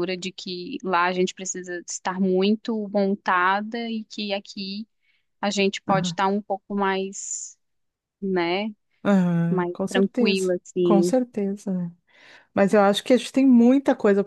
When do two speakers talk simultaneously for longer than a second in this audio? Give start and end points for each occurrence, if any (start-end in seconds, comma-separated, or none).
9.5-11.2